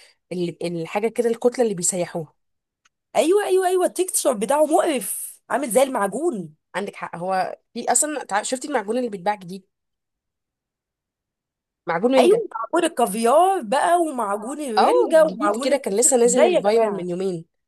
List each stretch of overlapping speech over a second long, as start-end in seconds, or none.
14.8-17.1